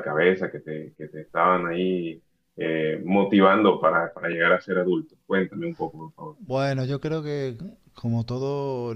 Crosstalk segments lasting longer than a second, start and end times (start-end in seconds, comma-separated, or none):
none